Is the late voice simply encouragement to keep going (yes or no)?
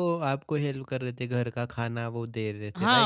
no